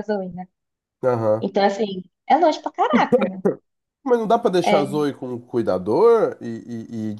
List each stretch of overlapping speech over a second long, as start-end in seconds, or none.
none